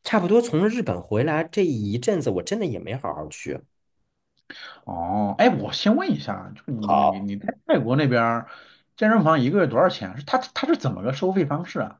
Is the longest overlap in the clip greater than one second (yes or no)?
no